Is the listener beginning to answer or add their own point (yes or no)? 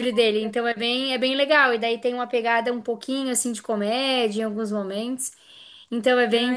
yes